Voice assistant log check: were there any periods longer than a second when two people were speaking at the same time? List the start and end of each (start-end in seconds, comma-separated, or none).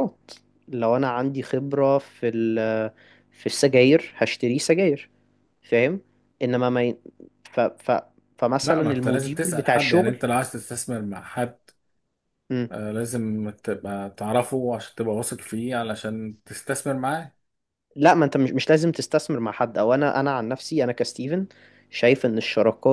8.6-10.2